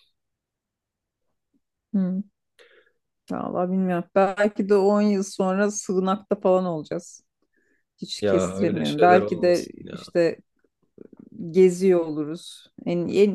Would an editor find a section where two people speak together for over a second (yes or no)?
yes